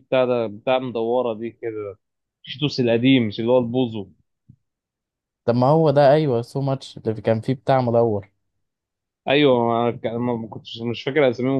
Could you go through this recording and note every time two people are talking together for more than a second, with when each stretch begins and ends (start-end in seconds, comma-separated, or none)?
none